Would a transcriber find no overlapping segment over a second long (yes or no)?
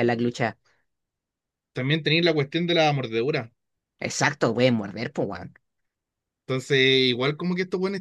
yes